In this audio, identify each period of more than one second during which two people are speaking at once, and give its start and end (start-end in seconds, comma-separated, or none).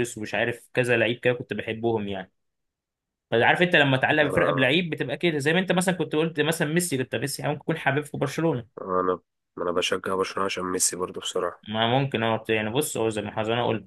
none